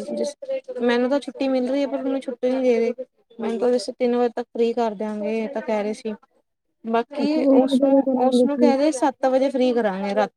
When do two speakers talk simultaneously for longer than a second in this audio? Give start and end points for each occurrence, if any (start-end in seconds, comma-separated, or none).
7.2-8.7